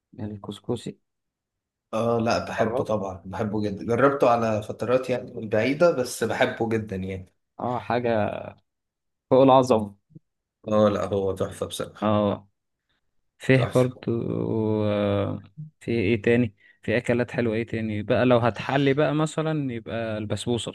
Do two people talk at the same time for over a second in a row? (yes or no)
no